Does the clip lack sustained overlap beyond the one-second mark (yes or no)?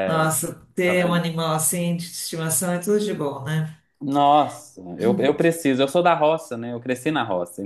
yes